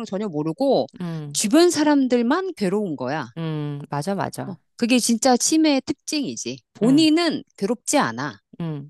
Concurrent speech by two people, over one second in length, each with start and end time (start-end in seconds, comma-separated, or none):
none